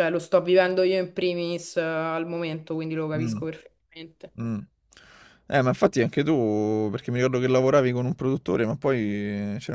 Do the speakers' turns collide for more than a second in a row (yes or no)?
no